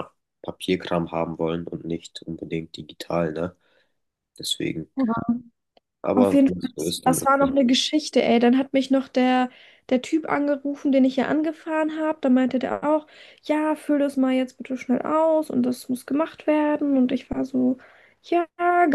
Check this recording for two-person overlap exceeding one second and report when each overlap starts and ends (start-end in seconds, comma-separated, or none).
6.2-7.8